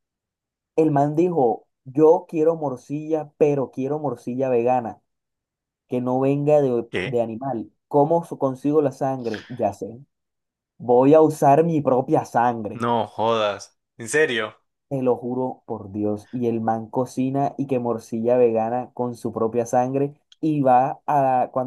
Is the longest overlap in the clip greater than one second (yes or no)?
no